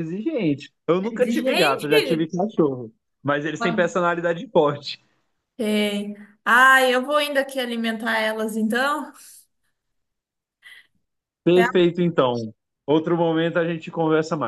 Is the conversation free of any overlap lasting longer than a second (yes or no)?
no